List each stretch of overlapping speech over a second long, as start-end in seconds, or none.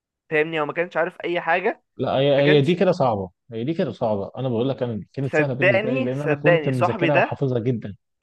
5.2-7.4